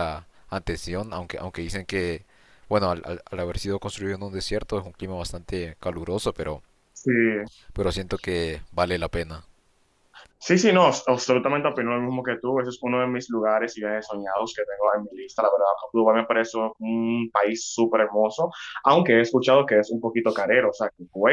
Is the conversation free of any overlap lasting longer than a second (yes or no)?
yes